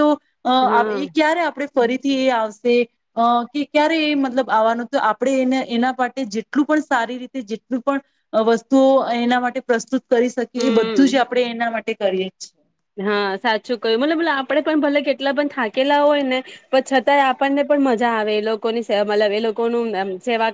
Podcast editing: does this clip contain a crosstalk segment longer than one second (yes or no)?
no